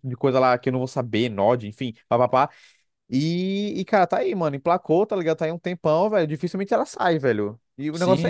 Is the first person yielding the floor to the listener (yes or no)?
yes